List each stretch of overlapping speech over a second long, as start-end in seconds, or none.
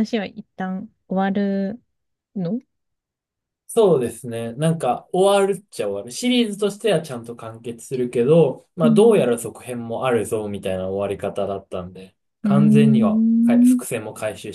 12.4-13.8